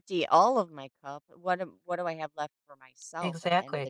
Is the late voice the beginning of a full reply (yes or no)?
yes